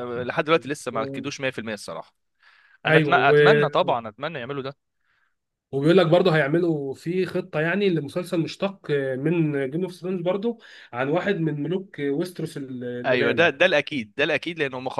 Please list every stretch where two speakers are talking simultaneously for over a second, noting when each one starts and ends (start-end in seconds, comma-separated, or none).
none